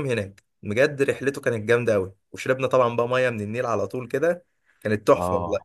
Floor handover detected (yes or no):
yes